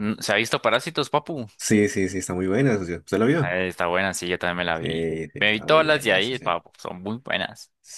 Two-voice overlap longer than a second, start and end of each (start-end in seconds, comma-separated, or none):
4.7-6.5